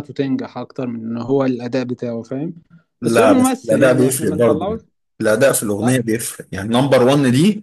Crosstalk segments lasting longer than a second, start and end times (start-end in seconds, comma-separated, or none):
3.0-4.8